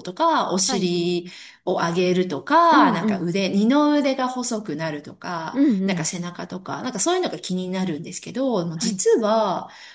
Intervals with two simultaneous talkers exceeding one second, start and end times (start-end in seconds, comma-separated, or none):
none